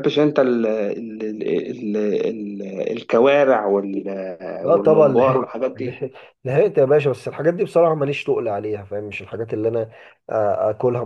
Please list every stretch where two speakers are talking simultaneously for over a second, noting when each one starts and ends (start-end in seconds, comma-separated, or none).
4.7-6.1